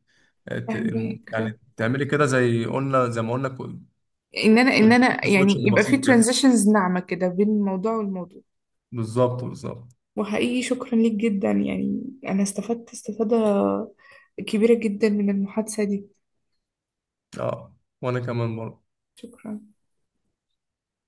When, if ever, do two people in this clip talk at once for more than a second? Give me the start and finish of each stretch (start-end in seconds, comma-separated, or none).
4.8-6.2